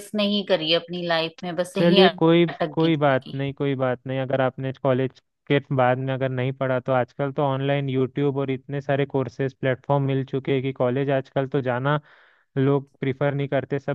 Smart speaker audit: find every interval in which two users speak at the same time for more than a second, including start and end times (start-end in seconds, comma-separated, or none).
1.8-3.4